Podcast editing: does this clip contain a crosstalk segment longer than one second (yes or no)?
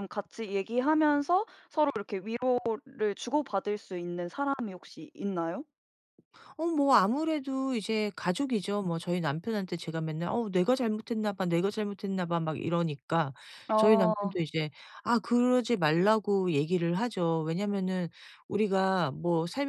no